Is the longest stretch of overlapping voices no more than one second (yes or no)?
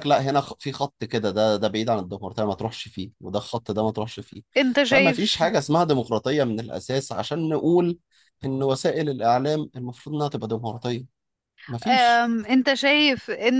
yes